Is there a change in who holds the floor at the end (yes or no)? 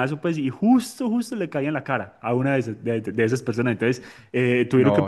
no